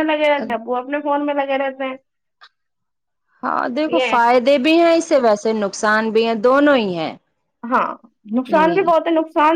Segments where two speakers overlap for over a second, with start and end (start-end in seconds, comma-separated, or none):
none